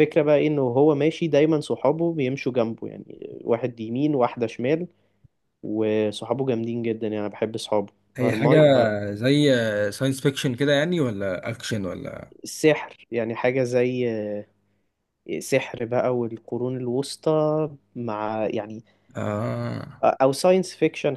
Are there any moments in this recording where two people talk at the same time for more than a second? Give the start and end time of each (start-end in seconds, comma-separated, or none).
none